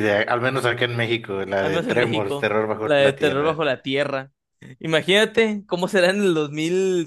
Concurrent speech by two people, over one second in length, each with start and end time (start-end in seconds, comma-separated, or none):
1.6-3.6